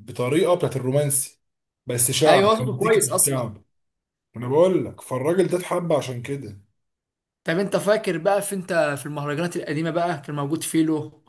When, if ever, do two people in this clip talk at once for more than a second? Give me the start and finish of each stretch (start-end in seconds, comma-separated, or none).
2.3-3.5